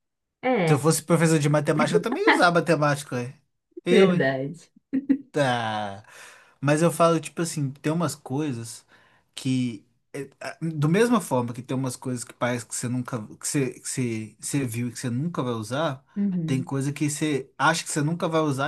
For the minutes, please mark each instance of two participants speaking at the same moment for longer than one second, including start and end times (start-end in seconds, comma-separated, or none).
none